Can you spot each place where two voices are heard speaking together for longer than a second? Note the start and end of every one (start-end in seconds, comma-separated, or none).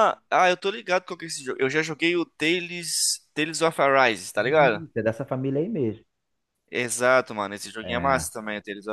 none